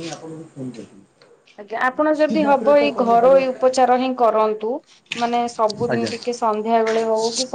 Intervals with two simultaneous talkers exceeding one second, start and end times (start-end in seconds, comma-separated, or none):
2.3-3.7